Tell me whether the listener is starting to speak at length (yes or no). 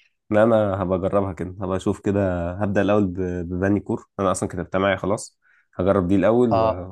no